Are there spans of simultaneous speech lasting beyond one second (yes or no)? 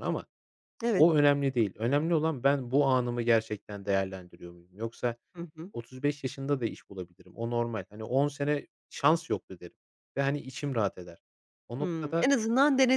no